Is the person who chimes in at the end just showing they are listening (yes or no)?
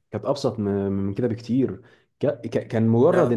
yes